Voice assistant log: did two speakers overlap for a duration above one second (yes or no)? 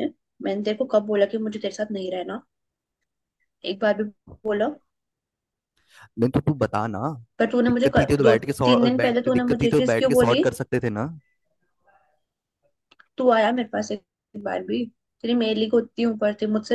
yes